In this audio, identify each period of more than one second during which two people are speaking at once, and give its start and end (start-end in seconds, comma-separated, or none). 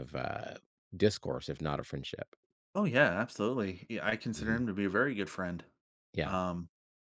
none